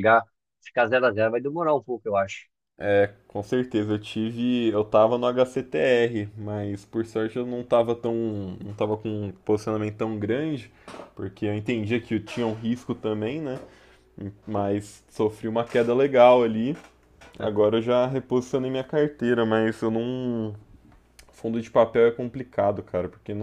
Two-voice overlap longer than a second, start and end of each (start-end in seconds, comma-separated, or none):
none